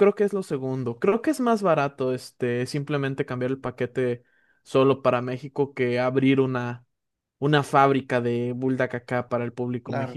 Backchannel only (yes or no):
no